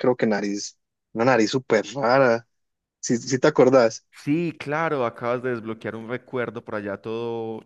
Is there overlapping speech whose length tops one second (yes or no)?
no